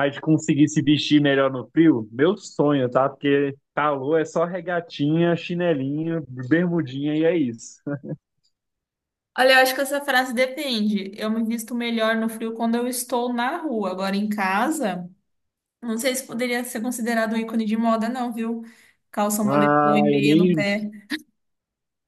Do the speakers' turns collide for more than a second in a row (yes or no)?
yes